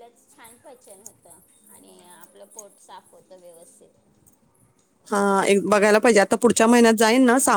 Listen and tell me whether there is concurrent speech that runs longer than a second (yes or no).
no